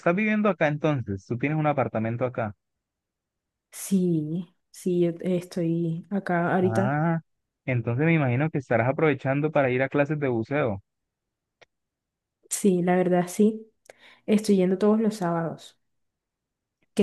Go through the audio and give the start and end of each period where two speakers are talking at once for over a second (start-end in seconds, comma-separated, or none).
none